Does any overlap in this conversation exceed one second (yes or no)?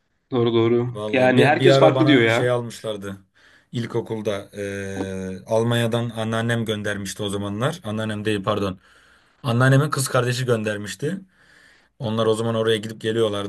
yes